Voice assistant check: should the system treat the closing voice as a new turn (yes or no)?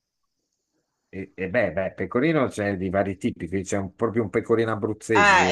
yes